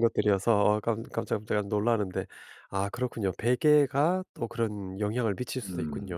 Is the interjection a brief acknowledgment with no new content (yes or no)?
no